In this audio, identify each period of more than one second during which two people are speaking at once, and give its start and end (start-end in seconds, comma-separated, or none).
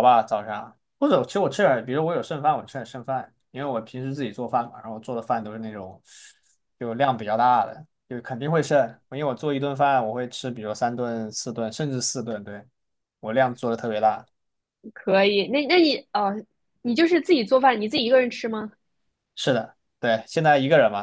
none